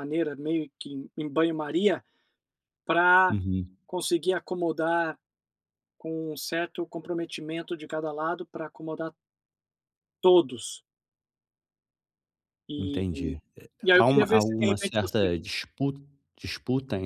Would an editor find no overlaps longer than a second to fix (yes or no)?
no